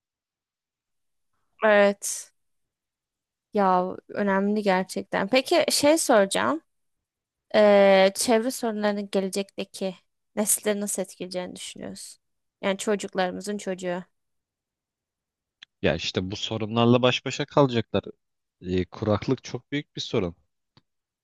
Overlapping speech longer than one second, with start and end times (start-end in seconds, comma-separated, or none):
none